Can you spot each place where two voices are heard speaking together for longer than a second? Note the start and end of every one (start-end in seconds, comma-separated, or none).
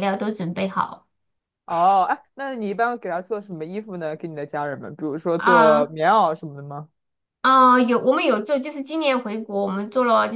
none